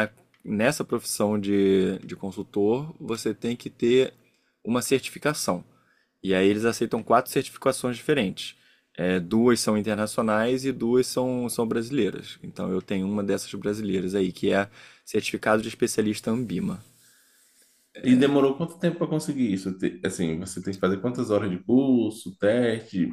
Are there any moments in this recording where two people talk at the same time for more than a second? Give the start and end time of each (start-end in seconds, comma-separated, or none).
none